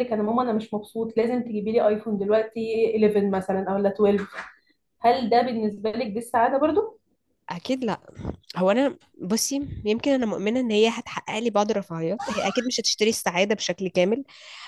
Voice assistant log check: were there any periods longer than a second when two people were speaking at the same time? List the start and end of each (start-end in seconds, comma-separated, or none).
none